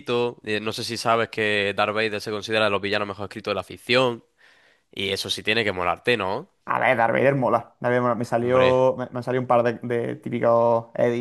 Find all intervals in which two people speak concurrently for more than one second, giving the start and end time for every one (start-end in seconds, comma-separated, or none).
none